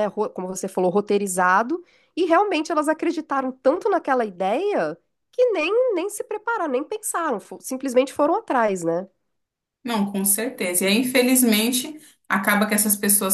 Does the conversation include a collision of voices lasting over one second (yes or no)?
no